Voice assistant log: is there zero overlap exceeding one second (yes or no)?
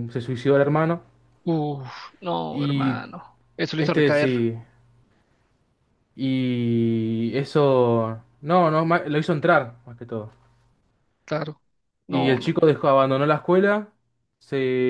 yes